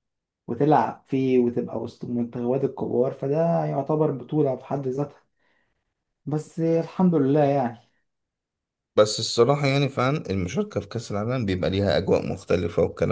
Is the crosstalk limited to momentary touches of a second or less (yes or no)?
yes